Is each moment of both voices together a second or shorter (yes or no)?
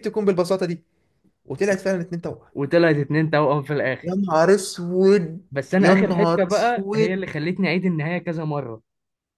no